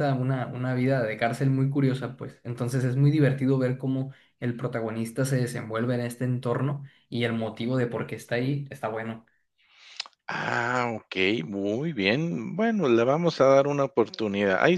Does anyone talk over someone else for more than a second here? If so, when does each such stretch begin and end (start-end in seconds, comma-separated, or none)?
none